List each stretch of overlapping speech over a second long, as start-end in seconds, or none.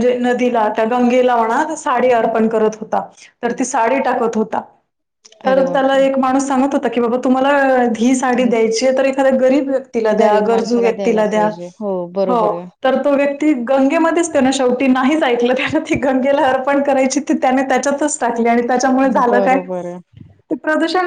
10.2-11.5